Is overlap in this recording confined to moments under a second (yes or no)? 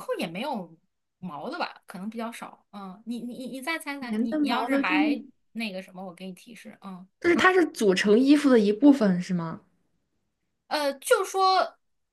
no